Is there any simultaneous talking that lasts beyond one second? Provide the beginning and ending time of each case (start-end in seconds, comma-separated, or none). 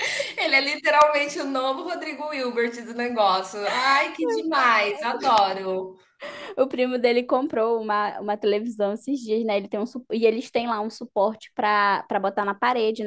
none